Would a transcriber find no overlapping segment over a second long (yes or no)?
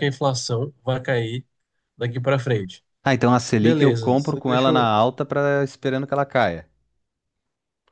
no